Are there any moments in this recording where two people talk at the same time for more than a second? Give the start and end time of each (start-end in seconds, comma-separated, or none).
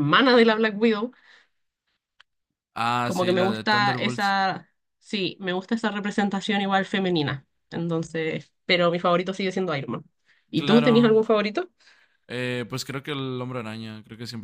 3.0-4.4